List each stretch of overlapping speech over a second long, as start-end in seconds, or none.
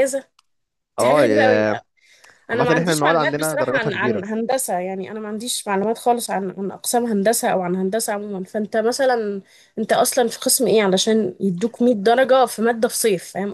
2.5-4.2